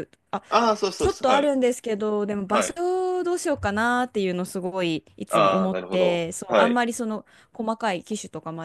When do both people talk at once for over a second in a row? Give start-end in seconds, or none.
5.3-6.8